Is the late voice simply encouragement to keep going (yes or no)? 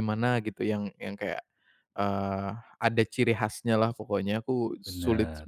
yes